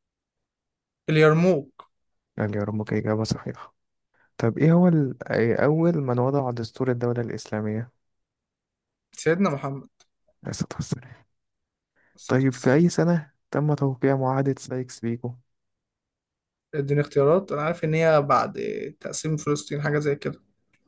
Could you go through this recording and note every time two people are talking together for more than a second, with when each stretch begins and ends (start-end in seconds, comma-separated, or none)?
none